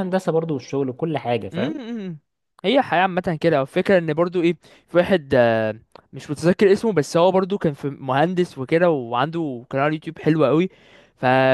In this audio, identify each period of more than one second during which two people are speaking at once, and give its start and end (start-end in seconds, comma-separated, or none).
none